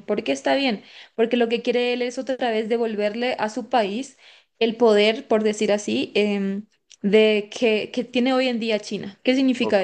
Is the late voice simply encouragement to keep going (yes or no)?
no